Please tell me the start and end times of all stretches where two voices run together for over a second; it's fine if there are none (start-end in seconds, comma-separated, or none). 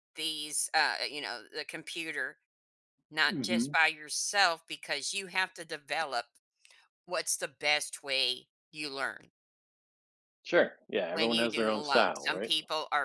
11.1-12.5